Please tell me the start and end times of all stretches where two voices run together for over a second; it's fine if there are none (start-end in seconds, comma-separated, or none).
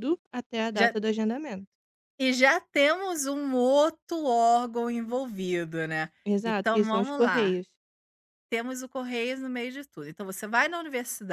6.2-7.6